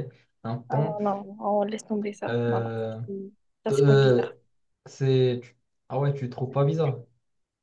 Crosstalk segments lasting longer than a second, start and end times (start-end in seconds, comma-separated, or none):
none